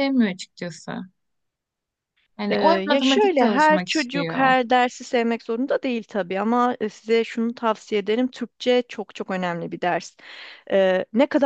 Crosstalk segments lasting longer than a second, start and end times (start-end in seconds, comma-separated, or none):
2.5-4.5